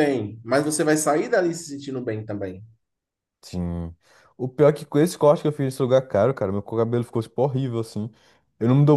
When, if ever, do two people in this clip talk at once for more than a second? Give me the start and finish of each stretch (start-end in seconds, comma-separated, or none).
none